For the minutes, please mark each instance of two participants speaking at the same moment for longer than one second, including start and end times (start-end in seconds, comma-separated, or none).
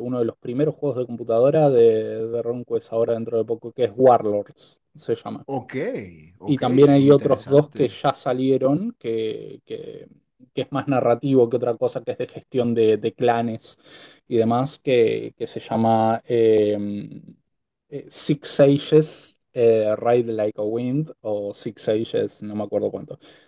6.4-8.0